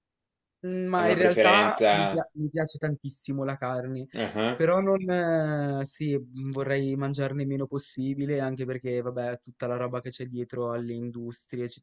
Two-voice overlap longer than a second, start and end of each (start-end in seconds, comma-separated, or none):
0.9-2.3